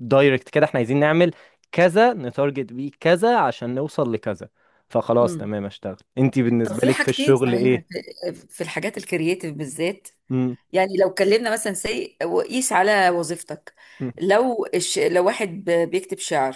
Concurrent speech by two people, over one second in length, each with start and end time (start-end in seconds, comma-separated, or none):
6.6-7.8